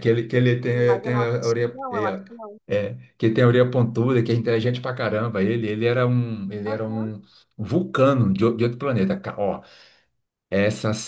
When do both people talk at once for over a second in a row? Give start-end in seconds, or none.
0.7-2.1